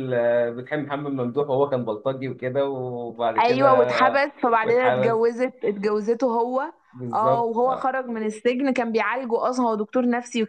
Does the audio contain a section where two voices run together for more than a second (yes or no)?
yes